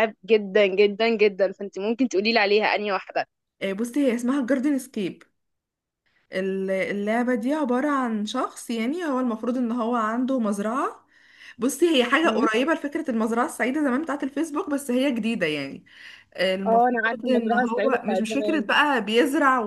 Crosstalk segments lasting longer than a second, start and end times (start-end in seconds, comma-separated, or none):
16.6-18.7